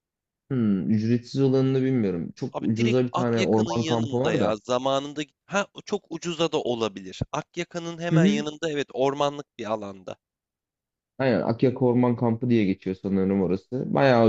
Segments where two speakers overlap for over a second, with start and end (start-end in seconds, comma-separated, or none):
2.5-4.6